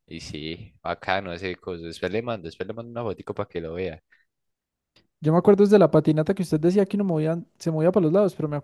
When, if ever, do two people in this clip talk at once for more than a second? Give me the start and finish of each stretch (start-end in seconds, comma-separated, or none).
none